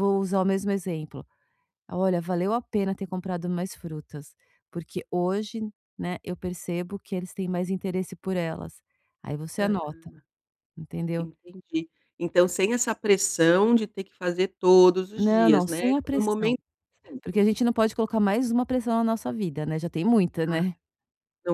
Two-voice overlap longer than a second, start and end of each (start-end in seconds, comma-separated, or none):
15.2-16.5